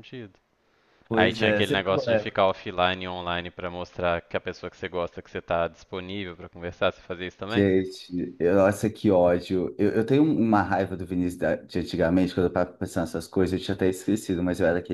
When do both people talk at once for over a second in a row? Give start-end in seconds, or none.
1.1-2.4